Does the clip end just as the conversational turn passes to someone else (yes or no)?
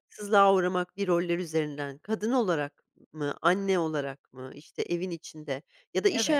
no